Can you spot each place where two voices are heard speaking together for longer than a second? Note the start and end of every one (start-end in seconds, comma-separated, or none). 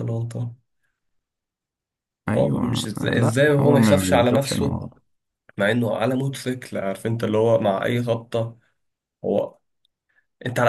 2.4-4.8